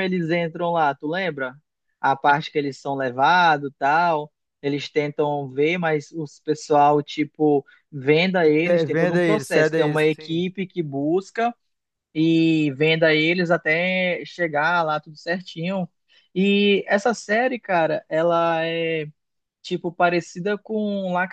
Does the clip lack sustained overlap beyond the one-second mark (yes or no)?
no